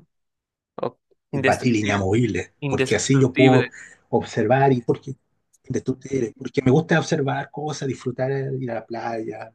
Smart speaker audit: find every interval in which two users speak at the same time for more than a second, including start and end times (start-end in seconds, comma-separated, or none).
1.3-3.6